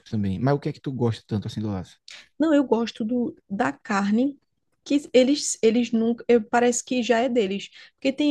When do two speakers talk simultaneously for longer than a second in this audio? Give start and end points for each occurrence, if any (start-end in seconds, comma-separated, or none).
none